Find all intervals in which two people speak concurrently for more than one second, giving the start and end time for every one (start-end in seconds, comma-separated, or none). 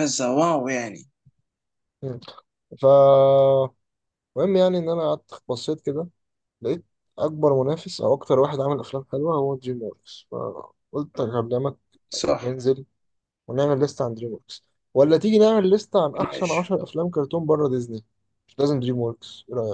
none